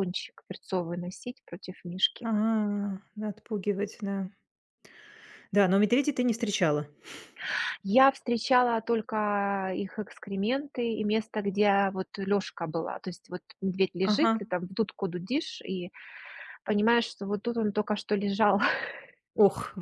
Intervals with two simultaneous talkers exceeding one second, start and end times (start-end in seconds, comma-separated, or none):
none